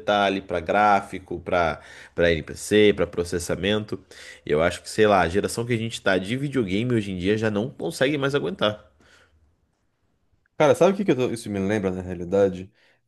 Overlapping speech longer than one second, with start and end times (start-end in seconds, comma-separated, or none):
none